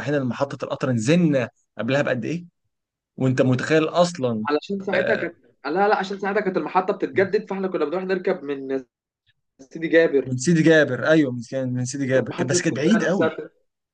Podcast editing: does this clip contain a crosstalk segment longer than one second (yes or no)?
yes